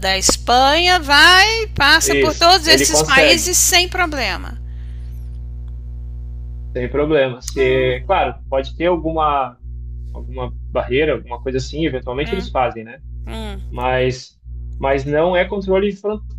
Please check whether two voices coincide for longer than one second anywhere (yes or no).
yes